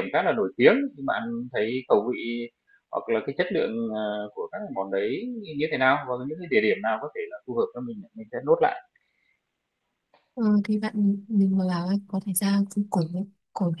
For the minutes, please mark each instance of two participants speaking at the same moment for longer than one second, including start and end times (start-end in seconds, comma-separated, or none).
none